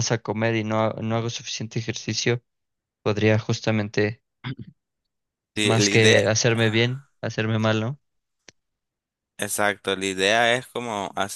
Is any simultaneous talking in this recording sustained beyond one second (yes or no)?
yes